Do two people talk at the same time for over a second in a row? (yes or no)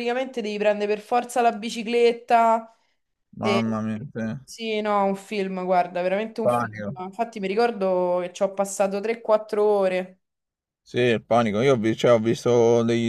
no